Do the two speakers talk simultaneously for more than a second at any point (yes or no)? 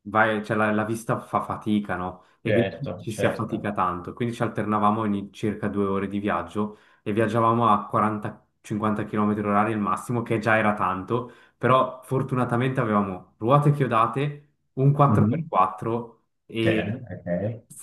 yes